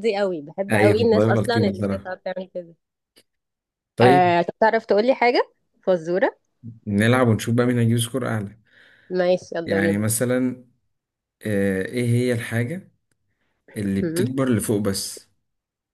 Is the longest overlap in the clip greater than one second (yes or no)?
yes